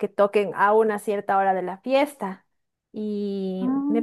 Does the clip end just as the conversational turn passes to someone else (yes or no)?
no